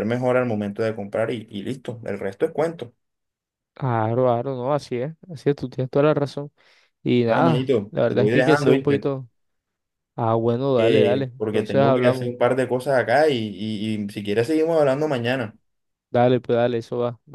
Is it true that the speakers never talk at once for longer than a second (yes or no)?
no